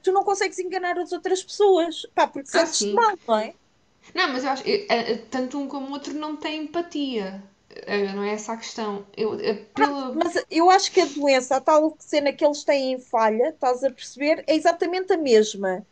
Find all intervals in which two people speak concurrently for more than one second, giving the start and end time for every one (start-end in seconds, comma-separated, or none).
none